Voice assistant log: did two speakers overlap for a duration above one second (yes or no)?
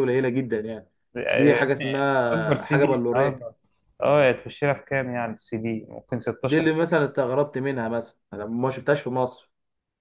yes